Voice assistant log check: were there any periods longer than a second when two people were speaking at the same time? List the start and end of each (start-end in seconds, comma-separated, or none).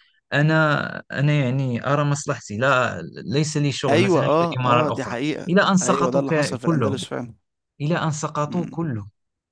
3.9-7.0